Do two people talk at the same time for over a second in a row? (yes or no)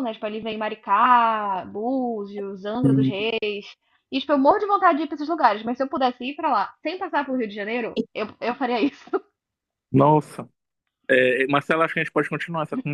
no